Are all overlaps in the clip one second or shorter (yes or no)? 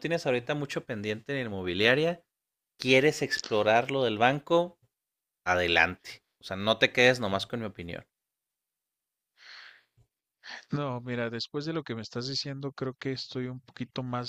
yes